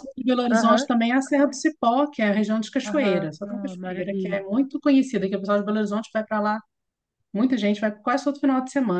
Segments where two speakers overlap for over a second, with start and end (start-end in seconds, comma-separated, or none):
2.9-4.4